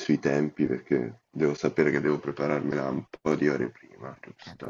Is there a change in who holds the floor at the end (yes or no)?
yes